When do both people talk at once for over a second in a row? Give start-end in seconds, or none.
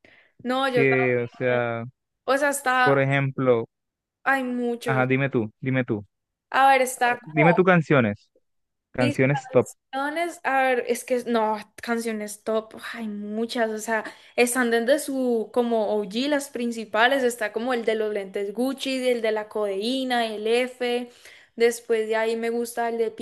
none